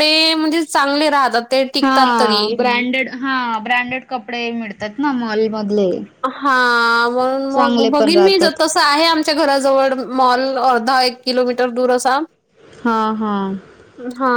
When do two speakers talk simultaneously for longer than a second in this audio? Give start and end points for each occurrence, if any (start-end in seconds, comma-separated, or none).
none